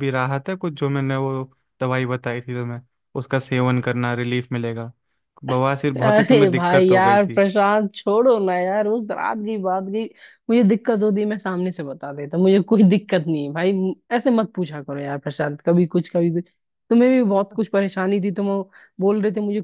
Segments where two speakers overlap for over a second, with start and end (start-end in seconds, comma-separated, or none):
6.0-7.4